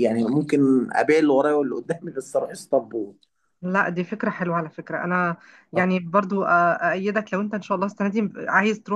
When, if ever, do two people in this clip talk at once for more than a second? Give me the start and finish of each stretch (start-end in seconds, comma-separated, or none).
none